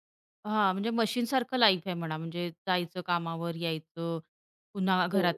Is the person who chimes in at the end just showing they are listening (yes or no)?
yes